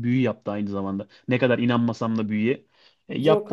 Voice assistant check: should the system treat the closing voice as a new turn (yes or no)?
no